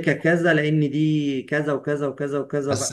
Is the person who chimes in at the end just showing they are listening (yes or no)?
no